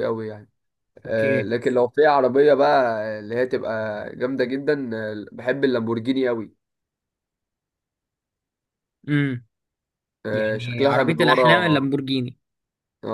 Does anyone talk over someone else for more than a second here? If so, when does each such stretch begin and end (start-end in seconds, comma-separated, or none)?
10.3-11.8